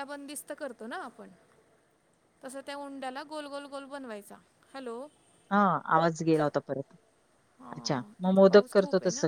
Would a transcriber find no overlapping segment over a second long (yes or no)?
yes